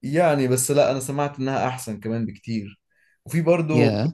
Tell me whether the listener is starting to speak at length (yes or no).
no